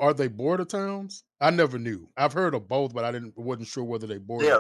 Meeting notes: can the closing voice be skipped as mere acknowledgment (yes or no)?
no